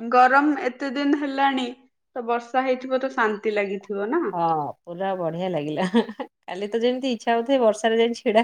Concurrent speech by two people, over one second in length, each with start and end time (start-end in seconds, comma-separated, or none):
none